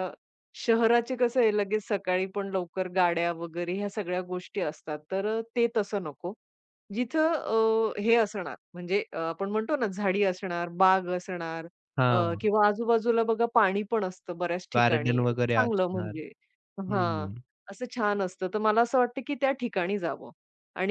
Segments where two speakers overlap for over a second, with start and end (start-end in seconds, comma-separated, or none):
14.8-16.2